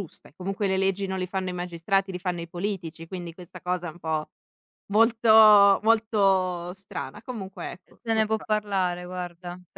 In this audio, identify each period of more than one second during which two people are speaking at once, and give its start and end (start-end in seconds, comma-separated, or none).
none